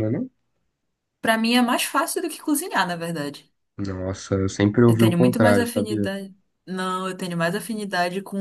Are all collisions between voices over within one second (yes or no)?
no